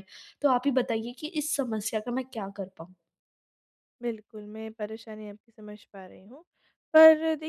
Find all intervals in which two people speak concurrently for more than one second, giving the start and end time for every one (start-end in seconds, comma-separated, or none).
none